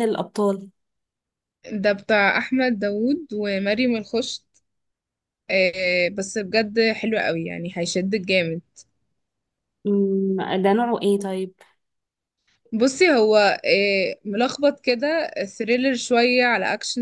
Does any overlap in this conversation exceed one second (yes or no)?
no